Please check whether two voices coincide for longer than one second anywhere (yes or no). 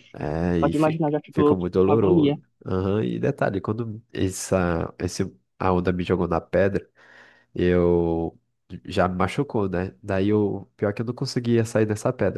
yes